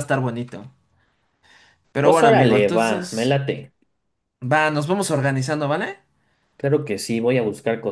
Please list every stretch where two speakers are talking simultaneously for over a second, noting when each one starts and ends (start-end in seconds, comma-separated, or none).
2.0-3.4